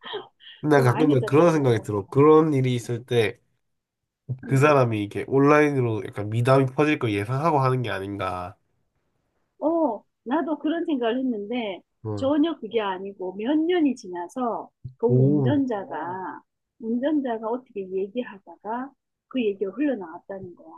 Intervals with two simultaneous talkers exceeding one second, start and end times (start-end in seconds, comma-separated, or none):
0.7-2.1